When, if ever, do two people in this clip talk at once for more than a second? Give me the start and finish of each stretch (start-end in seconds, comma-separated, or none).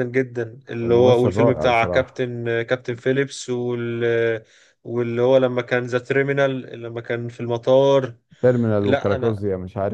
0.8-2.2